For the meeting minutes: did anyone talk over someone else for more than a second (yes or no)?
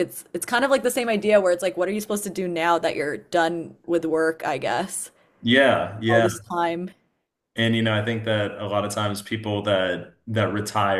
no